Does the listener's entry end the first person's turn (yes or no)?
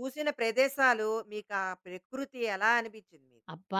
yes